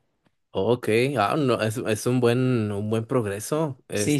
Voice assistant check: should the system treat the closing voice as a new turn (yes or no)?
no